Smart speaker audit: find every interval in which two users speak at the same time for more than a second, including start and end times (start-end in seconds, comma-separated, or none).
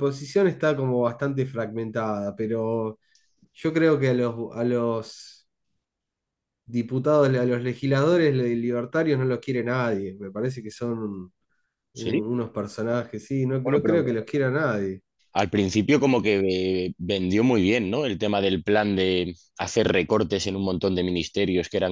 none